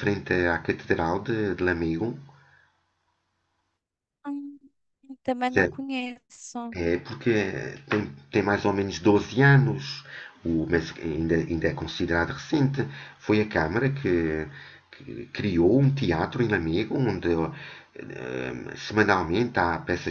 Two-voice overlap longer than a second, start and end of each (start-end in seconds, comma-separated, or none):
none